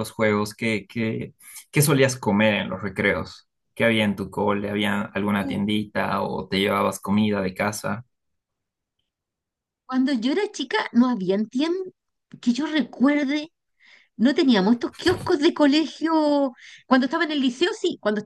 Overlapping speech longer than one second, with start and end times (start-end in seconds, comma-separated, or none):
none